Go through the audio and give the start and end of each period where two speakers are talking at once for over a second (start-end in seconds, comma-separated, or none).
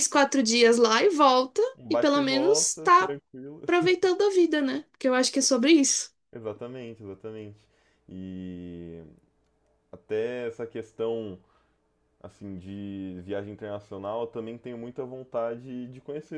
1.8-3.1